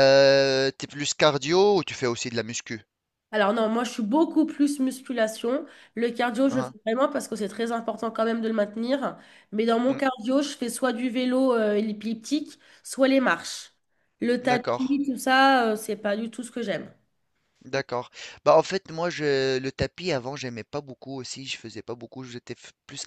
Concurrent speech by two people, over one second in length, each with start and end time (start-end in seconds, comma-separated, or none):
none